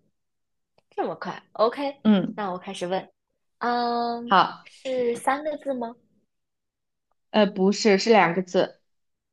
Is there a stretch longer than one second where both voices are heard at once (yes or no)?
no